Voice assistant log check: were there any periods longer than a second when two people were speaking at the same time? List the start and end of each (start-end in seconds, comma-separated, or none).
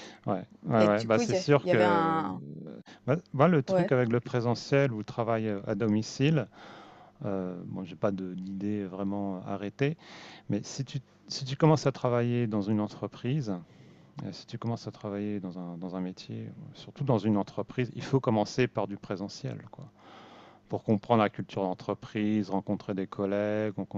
0.8-2.2